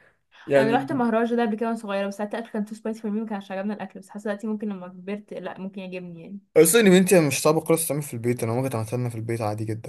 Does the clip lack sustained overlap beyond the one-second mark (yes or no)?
yes